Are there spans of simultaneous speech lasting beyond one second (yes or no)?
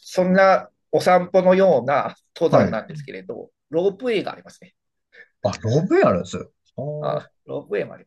no